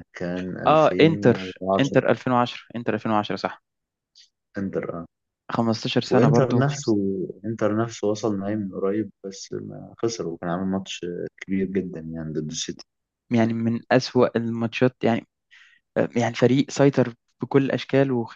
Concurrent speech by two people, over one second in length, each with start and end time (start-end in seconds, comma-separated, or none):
0.7-2.0